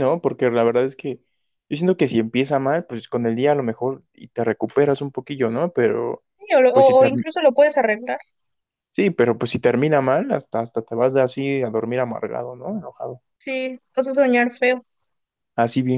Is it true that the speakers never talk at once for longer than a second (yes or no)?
yes